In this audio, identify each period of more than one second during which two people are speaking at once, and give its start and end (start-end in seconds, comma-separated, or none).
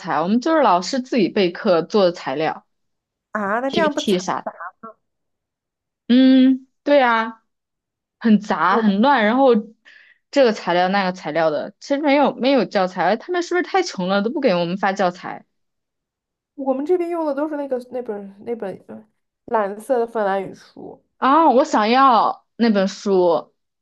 none